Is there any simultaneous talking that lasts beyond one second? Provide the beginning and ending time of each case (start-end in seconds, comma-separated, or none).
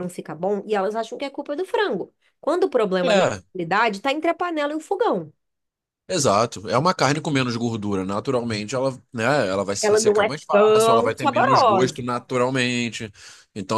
9.8-12.0